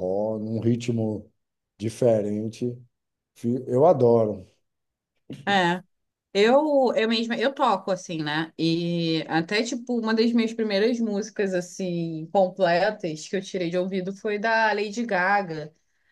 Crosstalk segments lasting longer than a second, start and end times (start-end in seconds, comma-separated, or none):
none